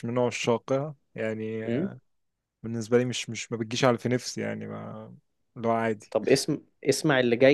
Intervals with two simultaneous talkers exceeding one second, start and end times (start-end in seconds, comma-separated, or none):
none